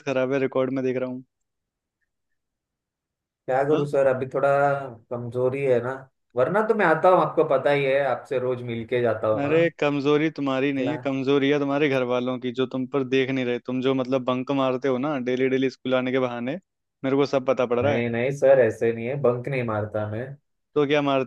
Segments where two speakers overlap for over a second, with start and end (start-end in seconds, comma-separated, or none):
none